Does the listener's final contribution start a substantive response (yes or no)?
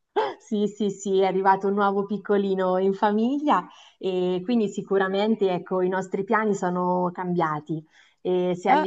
no